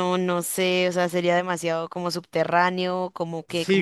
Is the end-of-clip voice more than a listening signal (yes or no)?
yes